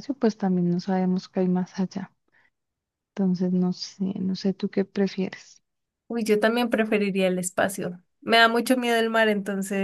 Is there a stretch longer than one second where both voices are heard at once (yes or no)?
no